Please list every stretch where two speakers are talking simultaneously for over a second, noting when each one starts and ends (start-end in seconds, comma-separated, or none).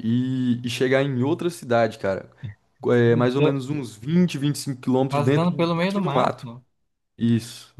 5.1-6.5